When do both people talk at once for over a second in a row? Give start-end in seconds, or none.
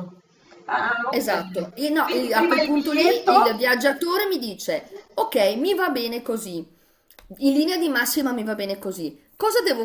1.1-3.3